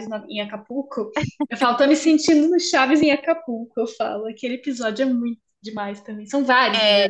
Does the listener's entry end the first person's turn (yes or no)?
yes